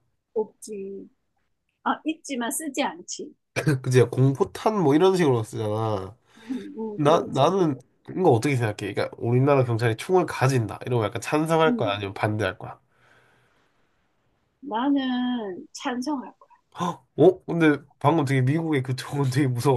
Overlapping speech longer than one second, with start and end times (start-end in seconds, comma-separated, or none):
none